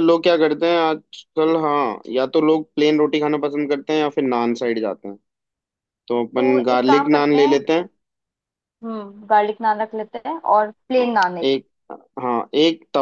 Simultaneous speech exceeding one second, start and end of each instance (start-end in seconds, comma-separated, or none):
6.4-7.6